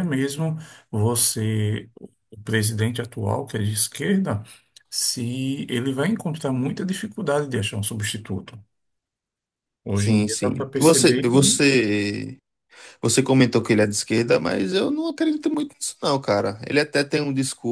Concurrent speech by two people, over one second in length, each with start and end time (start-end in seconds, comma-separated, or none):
9.9-11.6